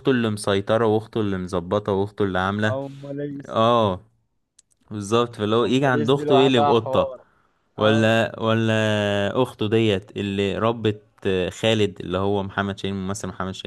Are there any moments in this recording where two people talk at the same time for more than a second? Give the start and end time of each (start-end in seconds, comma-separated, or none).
5.6-7.1